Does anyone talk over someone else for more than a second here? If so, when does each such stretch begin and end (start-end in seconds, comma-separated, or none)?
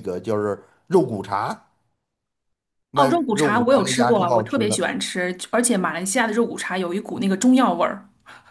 2.9-4.9